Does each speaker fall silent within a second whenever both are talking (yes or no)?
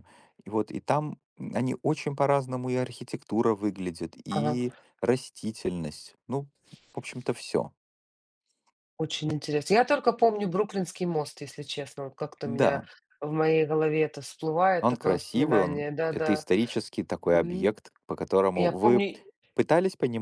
no